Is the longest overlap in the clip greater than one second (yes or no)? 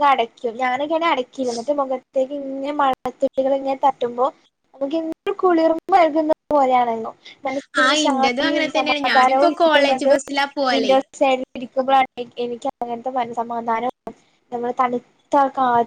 yes